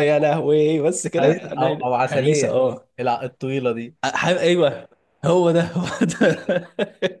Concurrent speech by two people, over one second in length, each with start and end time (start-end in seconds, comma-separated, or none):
1.2-2.6